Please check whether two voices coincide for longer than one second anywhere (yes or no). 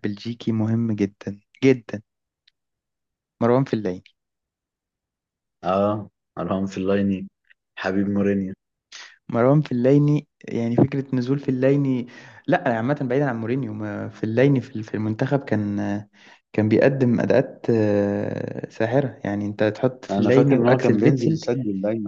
yes